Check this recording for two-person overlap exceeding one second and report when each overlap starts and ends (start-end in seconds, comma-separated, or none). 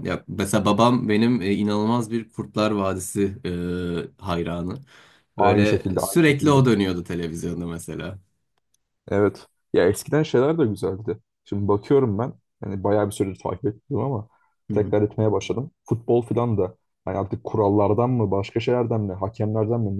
5.4-6.6